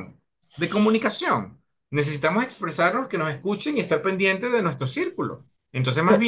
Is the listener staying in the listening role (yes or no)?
yes